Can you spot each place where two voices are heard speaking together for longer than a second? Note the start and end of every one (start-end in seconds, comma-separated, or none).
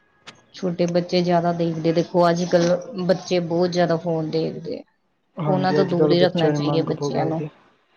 5.5-7.4